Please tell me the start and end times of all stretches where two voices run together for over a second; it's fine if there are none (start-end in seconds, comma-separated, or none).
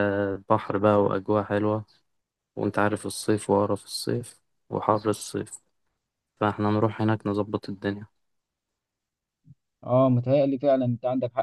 none